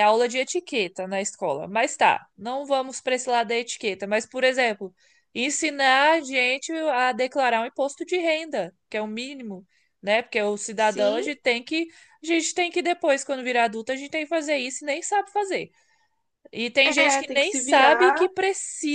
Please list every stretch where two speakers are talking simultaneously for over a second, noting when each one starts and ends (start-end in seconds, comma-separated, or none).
16.8-18.3